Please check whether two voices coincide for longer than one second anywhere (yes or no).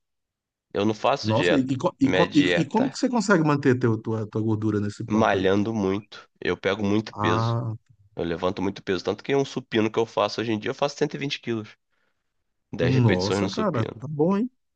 yes